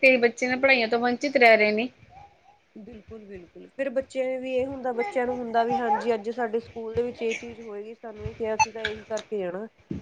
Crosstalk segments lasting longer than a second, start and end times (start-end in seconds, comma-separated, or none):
none